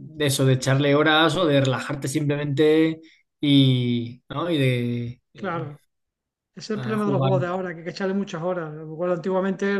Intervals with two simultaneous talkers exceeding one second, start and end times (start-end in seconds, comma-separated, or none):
none